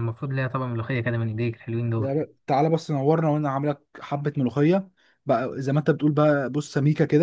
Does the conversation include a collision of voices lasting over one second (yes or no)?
no